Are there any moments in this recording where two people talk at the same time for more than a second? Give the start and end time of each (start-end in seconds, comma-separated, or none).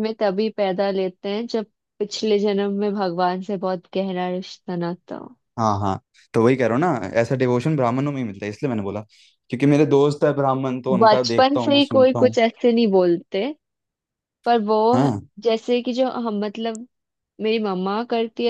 11.0-12.3